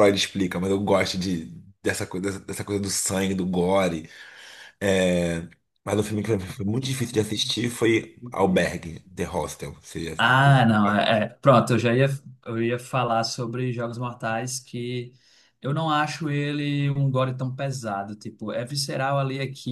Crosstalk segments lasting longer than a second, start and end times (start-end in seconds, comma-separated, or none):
none